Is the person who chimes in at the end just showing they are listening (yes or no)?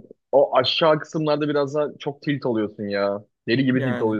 yes